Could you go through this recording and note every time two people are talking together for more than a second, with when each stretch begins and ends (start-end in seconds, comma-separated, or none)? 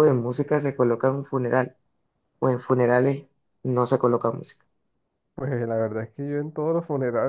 none